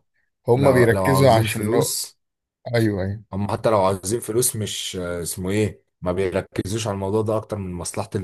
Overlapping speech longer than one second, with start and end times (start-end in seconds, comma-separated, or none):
0.6-2.0